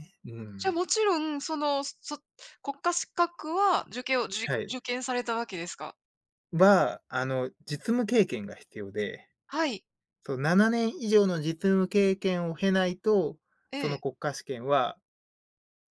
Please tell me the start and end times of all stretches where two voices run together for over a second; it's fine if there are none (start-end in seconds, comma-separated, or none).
none